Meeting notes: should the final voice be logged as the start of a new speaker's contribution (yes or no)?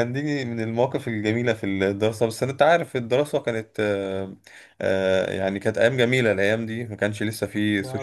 no